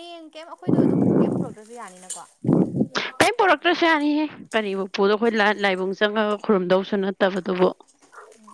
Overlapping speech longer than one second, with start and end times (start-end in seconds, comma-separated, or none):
none